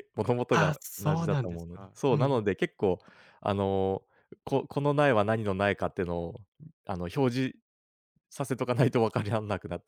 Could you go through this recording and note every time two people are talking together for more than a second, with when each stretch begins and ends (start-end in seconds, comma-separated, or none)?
0.5-2.4